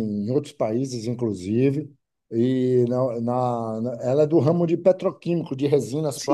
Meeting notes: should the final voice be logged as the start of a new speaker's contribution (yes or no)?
yes